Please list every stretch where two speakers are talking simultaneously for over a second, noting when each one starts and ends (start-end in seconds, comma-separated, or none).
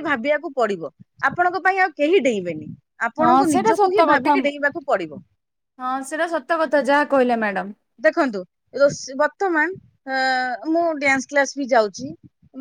3.2-5.1